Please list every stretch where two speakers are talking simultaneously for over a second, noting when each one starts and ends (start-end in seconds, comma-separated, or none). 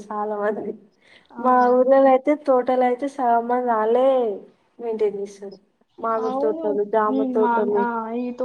6.3-7.7